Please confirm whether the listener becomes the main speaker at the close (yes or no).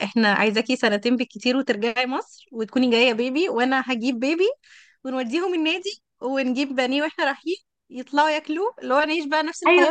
yes